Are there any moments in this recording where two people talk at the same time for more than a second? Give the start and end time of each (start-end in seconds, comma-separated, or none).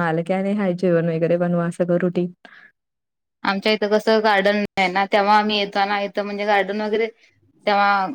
none